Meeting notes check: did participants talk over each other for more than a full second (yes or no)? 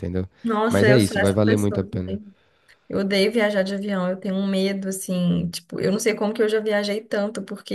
yes